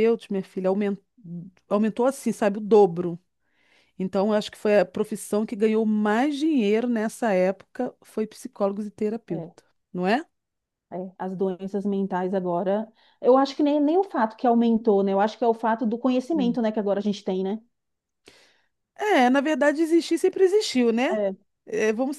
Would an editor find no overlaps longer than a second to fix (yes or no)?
yes